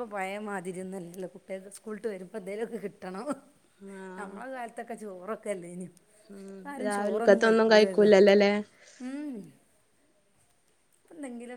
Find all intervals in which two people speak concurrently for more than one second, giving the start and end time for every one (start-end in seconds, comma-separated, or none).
none